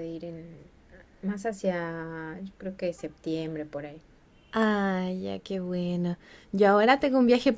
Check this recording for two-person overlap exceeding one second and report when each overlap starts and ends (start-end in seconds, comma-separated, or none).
none